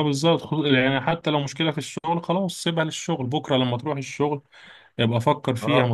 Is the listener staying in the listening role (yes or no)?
yes